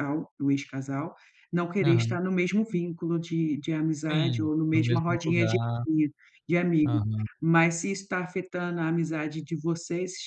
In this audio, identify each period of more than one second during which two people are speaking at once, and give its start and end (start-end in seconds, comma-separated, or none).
4.1-5.5